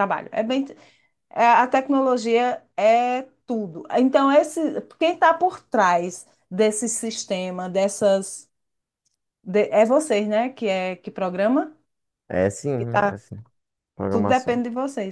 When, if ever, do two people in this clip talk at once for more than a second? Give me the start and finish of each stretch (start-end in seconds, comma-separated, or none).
none